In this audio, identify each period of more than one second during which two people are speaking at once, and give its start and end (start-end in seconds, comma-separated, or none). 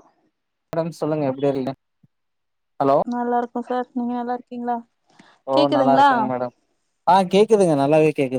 none